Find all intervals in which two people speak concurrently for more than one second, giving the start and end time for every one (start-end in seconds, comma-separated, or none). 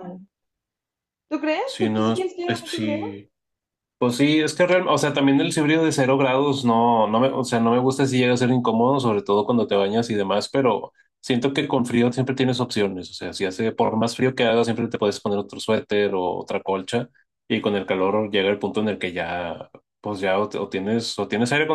1.6-3.0